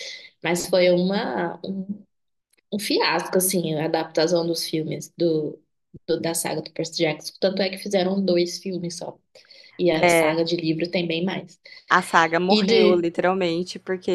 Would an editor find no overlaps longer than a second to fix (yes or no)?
yes